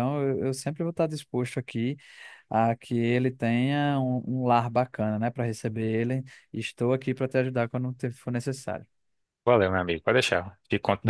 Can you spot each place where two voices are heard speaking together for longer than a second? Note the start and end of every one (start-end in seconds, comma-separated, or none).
none